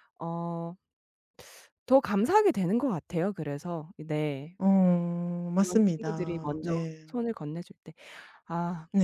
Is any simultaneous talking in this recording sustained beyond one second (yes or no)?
yes